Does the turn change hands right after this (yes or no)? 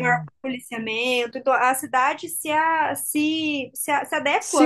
yes